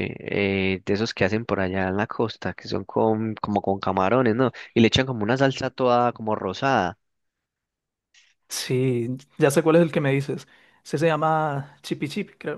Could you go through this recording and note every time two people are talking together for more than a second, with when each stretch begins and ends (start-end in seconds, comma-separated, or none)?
none